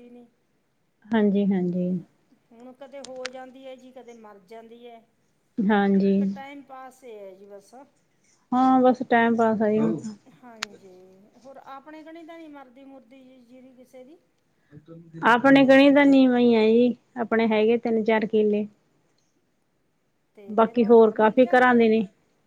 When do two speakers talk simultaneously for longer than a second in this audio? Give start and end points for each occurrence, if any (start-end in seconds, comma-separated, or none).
20.6-21.9